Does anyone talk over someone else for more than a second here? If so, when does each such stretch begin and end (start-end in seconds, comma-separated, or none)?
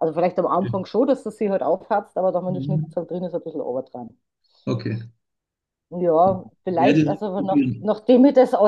6.7-7.9